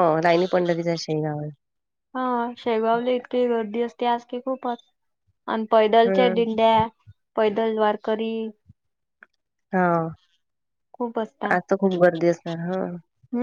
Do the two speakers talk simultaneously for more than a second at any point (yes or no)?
no